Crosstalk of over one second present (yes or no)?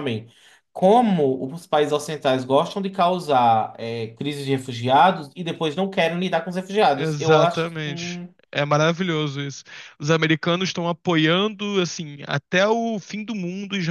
yes